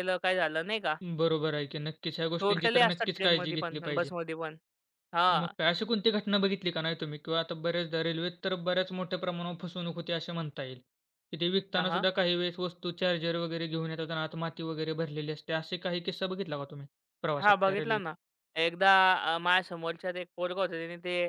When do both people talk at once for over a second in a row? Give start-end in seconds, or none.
2.4-4.1